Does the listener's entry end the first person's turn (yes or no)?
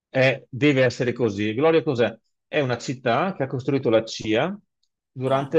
no